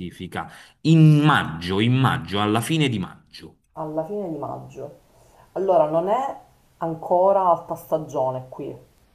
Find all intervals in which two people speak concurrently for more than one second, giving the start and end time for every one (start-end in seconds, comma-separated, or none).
none